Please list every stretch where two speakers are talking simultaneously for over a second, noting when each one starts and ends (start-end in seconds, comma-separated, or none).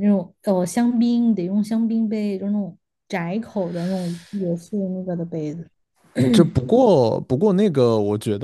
none